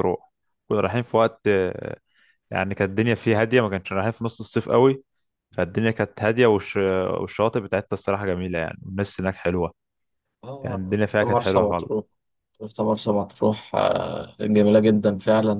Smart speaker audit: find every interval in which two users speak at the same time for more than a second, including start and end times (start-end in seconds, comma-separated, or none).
10.6-11.9